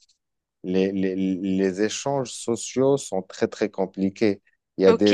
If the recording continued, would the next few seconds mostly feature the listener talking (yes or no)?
yes